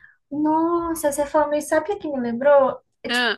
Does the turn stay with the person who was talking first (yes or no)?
yes